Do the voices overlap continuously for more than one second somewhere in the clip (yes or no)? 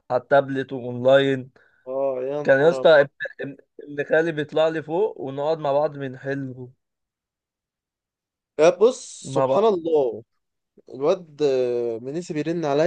no